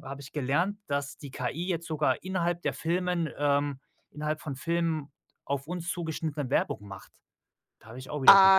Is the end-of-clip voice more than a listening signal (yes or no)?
yes